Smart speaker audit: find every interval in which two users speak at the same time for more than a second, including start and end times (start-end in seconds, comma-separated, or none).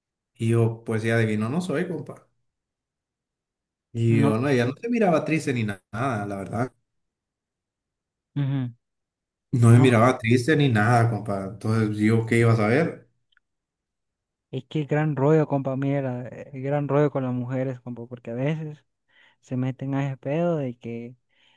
none